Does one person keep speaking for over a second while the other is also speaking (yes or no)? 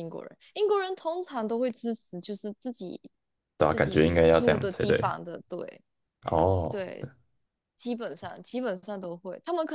yes